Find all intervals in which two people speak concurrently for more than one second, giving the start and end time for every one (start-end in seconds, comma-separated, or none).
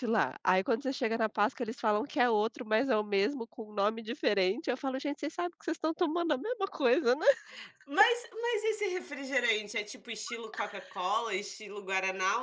none